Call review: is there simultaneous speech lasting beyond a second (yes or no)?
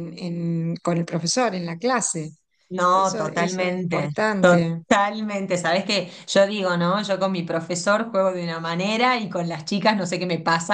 yes